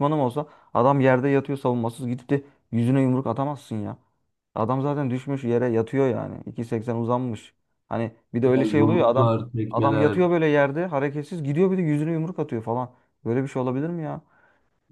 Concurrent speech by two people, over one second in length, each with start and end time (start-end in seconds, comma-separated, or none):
8.5-10.2